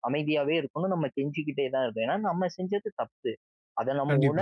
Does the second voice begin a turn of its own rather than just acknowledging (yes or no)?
no